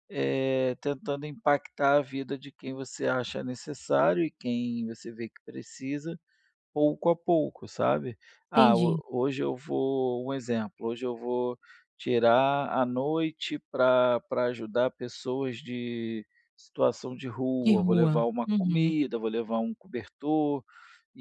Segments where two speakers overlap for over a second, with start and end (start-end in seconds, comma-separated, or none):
17.6-19.0